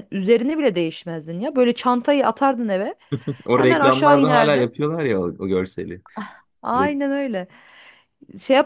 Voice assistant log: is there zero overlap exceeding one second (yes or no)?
no